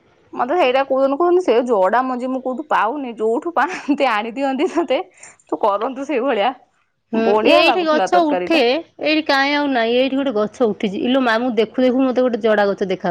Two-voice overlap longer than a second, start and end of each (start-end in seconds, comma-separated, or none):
none